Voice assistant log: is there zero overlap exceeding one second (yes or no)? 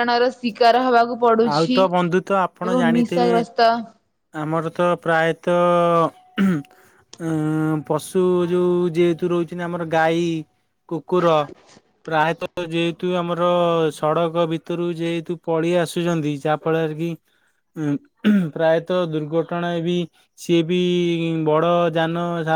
no